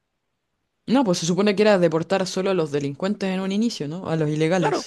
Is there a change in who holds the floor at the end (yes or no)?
yes